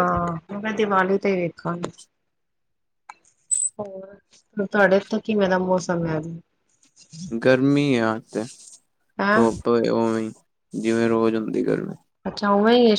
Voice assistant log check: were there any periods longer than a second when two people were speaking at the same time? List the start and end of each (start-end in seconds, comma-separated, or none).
none